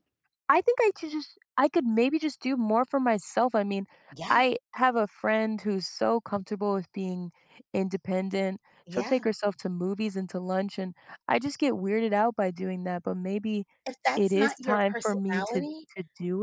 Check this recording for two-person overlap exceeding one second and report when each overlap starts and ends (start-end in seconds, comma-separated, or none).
14.2-15.9